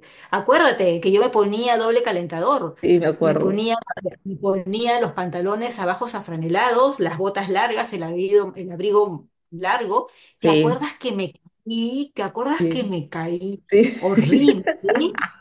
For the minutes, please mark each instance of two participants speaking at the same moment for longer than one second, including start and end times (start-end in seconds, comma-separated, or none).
none